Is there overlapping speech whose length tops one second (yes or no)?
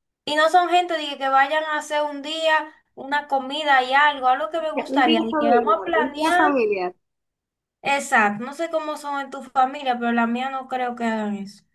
yes